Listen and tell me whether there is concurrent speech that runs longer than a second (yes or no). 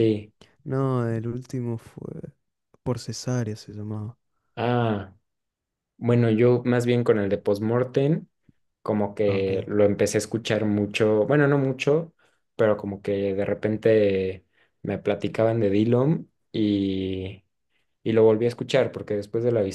no